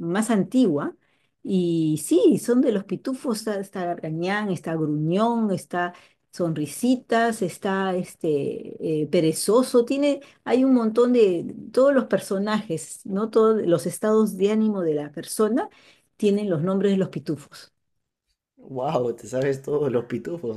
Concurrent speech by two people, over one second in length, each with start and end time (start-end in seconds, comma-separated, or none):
none